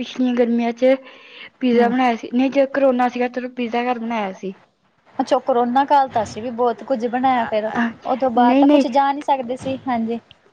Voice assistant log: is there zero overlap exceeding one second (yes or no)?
no